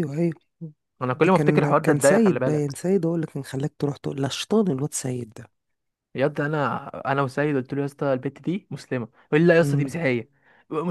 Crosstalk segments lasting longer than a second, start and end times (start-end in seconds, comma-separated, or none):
1.1-2.8